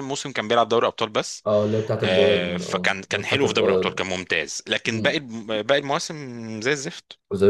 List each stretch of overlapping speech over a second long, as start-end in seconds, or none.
2.0-4.0